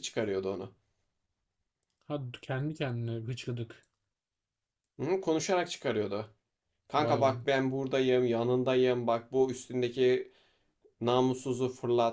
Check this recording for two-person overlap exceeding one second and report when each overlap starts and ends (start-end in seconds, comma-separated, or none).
none